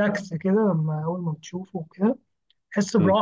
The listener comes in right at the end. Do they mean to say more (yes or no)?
no